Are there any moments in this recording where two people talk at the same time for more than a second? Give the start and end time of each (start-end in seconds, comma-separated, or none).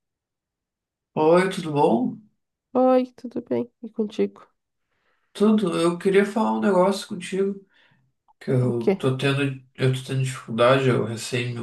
none